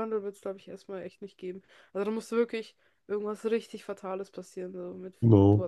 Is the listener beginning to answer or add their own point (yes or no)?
yes